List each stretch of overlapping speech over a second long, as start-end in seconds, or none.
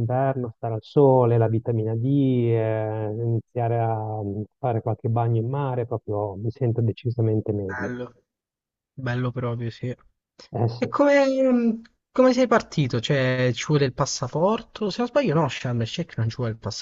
none